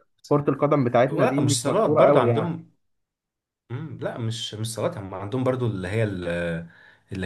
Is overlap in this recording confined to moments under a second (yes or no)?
no